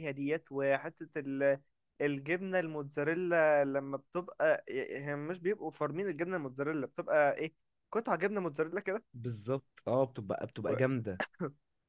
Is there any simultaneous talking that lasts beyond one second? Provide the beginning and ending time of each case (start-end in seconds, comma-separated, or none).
none